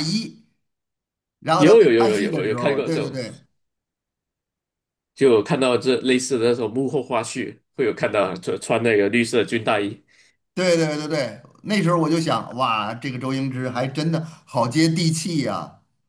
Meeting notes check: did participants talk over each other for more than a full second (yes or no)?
yes